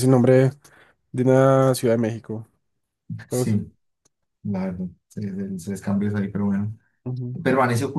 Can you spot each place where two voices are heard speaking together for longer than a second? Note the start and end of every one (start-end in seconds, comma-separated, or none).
none